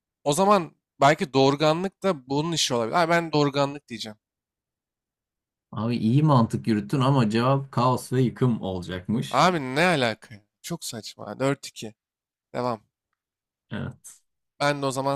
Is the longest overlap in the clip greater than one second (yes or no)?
no